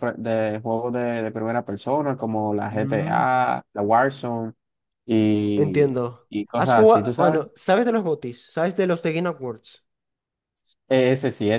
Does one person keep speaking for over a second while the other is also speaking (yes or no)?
yes